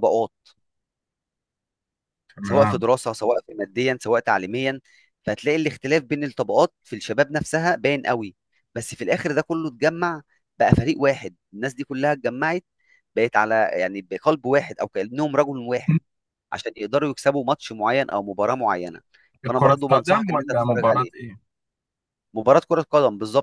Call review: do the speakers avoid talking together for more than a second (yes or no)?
no